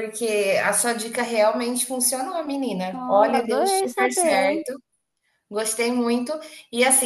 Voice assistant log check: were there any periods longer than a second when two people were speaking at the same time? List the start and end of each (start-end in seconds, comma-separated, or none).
2.9-4.6